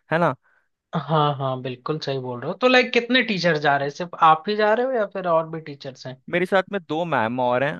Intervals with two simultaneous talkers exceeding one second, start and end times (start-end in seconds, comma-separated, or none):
none